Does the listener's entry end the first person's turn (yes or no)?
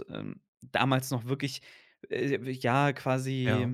no